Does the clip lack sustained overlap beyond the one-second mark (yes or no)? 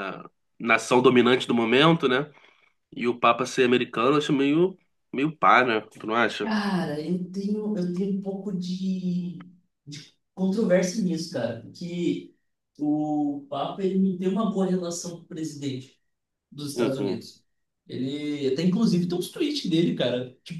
yes